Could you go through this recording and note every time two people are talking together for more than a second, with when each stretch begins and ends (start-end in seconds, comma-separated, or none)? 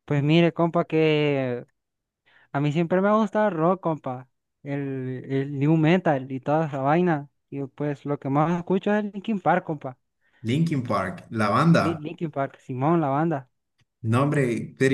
none